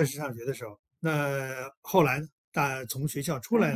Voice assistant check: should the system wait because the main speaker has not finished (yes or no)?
no